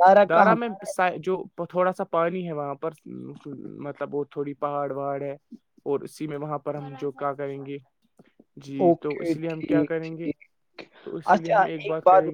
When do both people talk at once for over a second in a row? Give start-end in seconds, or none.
8.9-10.2